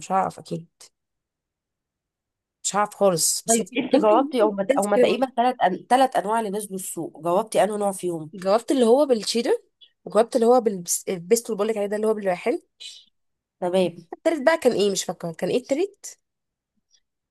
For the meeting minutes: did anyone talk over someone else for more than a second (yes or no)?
yes